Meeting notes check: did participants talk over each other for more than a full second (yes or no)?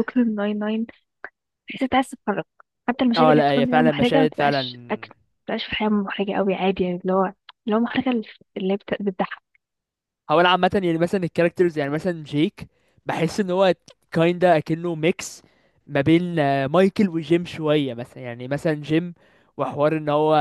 yes